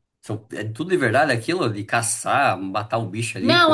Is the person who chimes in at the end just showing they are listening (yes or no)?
no